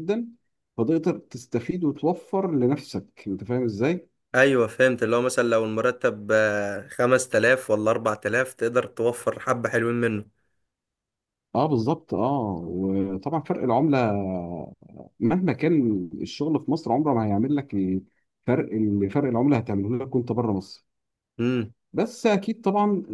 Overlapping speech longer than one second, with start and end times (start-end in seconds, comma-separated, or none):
none